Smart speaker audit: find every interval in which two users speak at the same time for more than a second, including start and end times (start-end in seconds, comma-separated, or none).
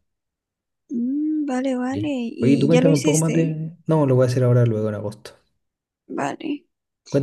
1.9-3.6